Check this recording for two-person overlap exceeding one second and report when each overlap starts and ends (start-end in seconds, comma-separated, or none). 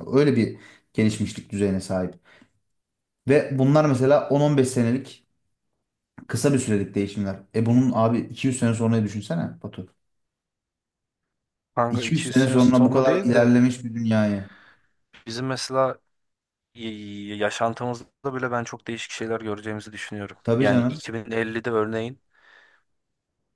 11.9-13.5